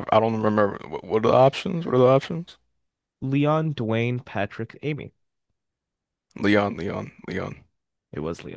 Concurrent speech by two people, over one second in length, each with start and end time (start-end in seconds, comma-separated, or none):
none